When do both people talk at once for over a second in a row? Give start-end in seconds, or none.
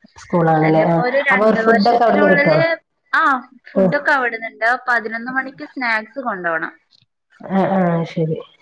0.7-2.6